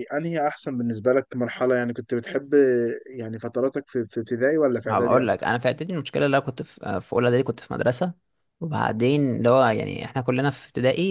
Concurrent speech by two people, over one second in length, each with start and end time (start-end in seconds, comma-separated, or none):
none